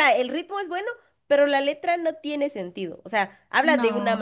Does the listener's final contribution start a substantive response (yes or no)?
no